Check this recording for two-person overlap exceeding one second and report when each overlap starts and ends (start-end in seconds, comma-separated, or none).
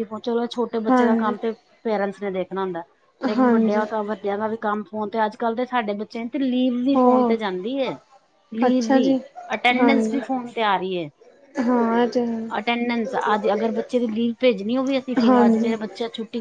none